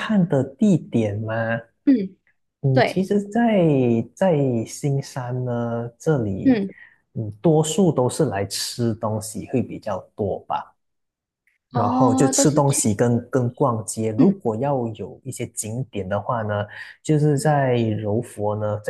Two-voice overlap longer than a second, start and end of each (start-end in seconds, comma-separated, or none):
11.7-12.9